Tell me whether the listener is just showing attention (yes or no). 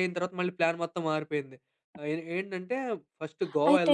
no